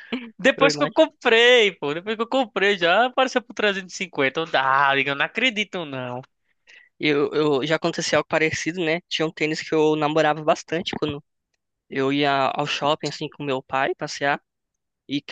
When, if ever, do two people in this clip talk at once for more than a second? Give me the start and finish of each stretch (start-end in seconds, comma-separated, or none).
none